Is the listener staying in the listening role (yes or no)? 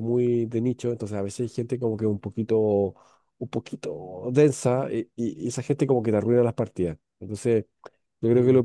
yes